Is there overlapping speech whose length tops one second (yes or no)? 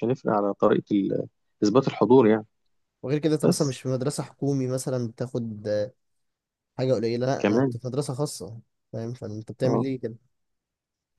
no